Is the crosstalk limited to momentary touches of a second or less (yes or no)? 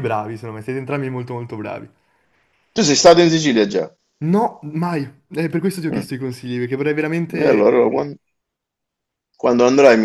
yes